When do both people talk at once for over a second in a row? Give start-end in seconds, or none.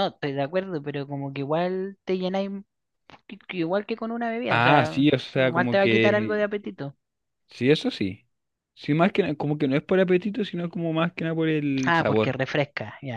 4.5-6.4